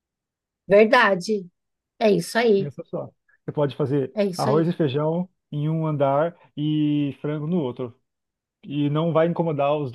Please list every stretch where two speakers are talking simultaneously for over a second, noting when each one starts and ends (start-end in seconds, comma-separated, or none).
none